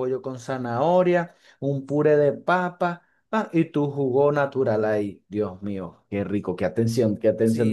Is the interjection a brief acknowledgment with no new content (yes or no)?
no